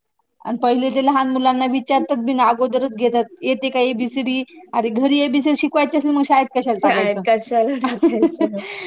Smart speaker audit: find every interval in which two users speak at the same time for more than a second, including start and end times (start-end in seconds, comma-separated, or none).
none